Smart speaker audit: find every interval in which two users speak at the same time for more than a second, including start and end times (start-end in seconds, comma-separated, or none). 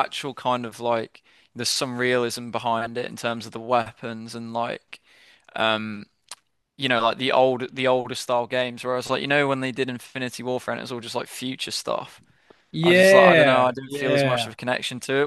12.8-14.5